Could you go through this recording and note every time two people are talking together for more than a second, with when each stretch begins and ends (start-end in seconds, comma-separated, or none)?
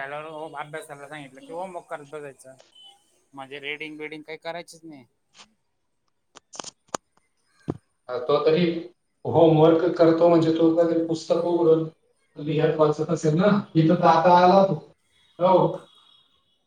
none